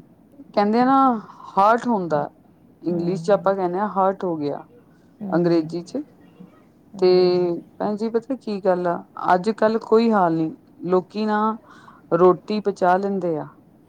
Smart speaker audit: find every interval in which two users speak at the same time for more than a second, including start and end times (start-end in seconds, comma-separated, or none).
none